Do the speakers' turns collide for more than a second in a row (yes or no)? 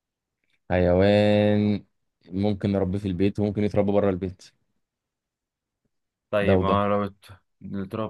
no